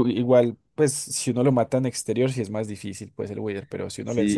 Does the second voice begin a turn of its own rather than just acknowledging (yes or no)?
yes